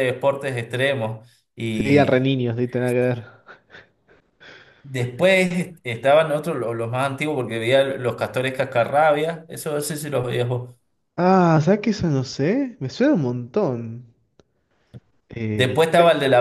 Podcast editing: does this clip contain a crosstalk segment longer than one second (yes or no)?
no